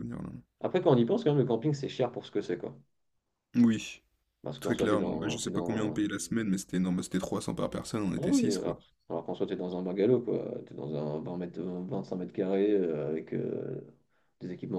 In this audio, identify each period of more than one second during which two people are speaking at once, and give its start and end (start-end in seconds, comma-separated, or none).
4.6-6.0